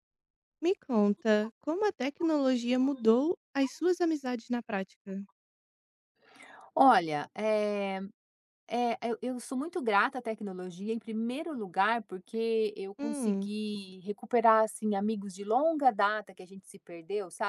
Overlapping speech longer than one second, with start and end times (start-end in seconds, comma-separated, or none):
none